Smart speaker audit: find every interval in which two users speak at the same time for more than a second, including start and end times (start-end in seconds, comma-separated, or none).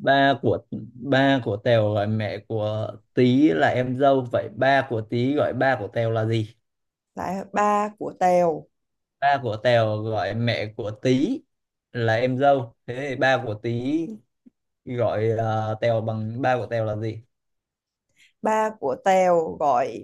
none